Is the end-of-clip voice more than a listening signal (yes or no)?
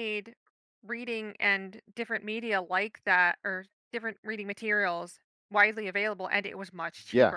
yes